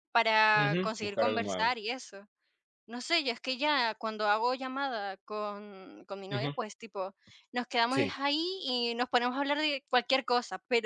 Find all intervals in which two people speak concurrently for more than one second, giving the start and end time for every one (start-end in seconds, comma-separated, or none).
0.6-1.8